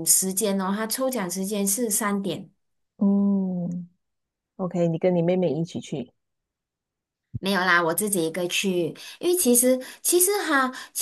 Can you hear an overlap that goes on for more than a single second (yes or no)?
no